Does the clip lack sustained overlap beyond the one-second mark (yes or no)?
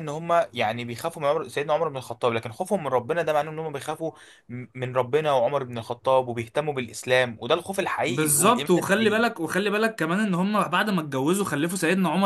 no